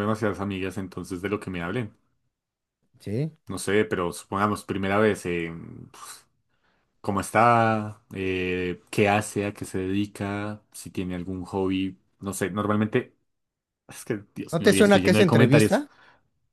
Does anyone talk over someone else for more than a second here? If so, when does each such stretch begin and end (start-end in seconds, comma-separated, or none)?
14.5-15.8